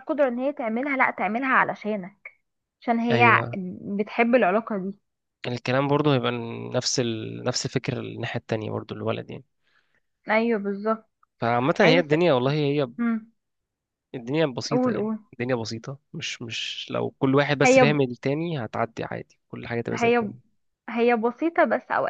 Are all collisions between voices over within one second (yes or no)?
yes